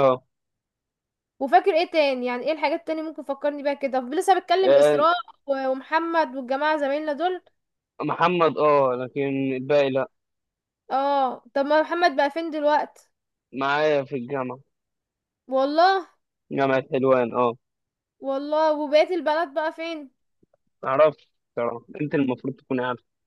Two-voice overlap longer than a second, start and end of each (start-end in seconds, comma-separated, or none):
none